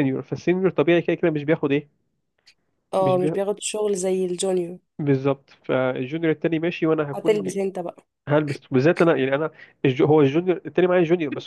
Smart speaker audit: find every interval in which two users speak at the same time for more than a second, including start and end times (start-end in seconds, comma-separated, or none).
none